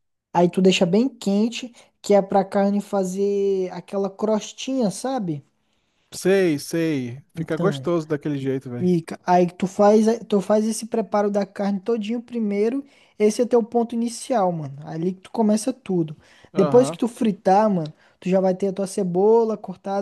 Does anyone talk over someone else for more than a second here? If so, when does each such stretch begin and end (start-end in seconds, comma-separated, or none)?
none